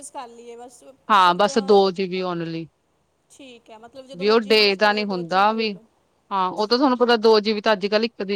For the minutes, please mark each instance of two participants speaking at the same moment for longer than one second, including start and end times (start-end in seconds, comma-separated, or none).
4.2-5.5